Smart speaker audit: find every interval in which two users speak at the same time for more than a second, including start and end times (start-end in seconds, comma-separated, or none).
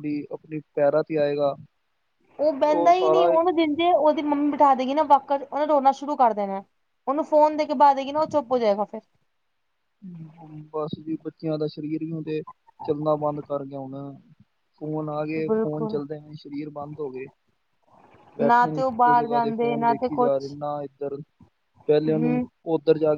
18.4-20.5